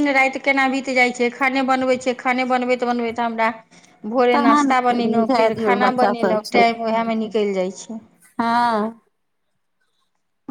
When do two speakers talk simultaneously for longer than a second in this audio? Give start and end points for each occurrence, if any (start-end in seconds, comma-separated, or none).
4.3-6.6